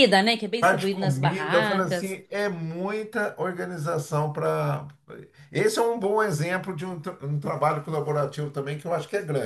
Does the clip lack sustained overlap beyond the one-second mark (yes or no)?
no